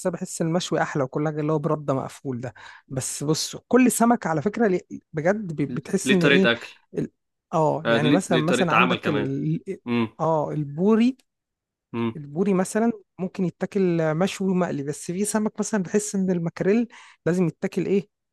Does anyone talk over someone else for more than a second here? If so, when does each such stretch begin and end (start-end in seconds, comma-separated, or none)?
7.8-9.3